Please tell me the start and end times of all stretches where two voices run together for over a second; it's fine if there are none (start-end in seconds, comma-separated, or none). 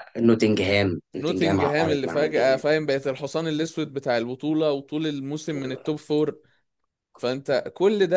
1.2-2.6